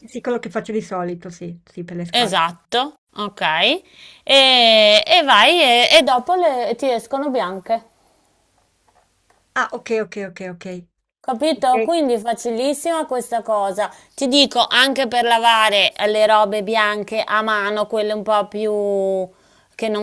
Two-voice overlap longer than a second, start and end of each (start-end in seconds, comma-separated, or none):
none